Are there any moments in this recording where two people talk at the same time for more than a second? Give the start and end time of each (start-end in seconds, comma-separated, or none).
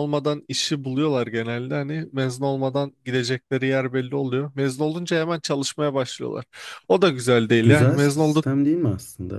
none